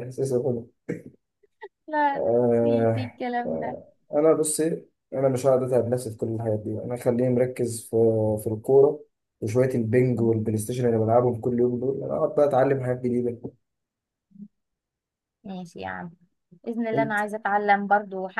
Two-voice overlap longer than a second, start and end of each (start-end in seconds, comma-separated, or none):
2.2-3.8